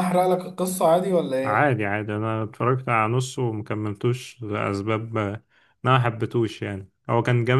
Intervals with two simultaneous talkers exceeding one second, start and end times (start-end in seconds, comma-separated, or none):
none